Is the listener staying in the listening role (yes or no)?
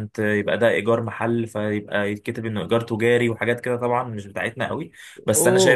yes